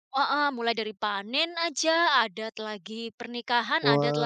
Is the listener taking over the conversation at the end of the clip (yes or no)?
no